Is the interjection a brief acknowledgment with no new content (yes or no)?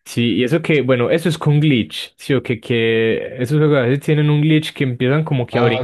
no